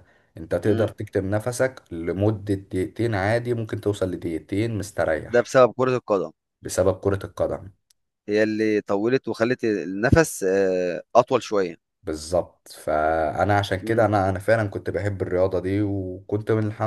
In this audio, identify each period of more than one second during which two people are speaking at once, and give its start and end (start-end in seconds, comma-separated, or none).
none